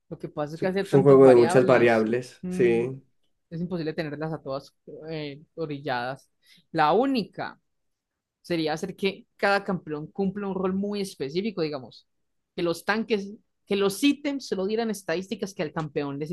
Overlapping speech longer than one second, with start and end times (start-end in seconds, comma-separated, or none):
0.5-2.8